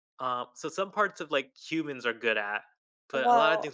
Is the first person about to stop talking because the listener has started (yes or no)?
no